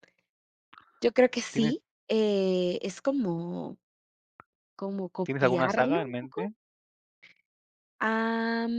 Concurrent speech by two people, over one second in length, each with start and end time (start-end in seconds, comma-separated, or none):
5.2-6.5